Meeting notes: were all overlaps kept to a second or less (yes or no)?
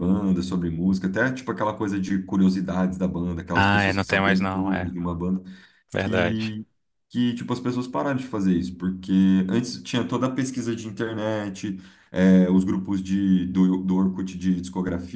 no